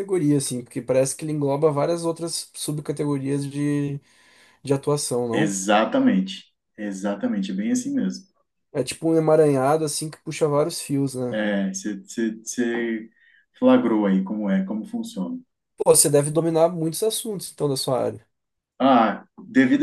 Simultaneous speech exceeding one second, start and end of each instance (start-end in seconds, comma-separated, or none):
none